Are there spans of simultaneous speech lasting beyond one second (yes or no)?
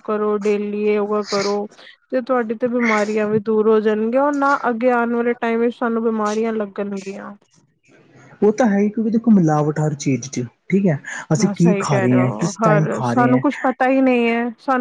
yes